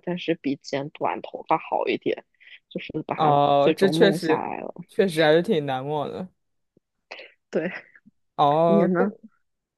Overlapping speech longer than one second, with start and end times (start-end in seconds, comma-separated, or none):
3.1-4.5